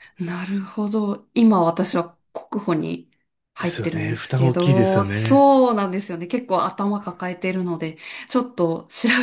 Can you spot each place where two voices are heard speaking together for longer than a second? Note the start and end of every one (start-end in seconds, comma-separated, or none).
3.6-5.4